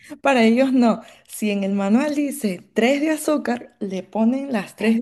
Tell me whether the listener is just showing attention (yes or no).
yes